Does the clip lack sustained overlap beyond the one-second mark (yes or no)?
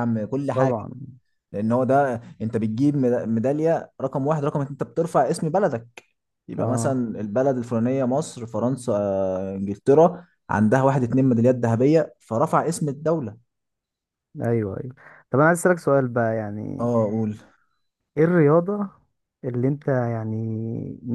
yes